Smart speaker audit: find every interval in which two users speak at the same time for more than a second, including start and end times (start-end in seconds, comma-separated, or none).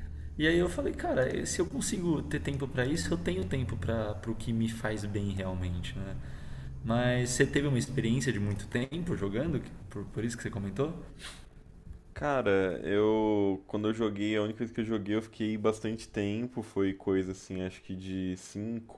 none